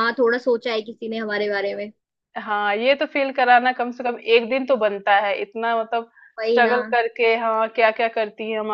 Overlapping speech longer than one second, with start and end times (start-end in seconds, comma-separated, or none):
none